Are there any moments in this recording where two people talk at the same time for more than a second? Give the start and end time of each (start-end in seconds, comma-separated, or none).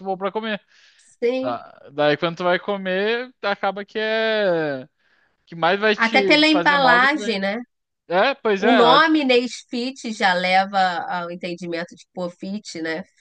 6.0-7.4